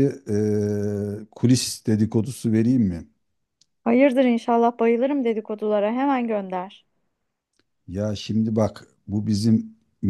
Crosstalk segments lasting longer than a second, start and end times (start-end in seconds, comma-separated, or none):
none